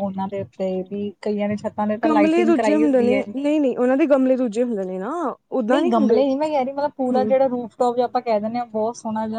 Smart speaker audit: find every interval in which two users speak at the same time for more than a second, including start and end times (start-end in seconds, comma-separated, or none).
2.0-3.5